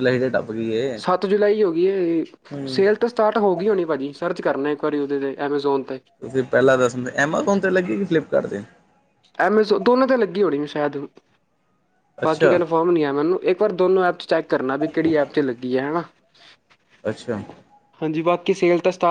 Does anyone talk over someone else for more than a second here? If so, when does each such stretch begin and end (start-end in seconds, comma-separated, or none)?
none